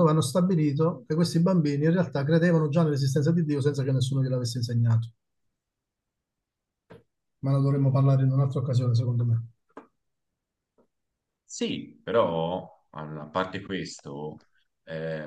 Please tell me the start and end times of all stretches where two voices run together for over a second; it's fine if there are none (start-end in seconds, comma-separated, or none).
none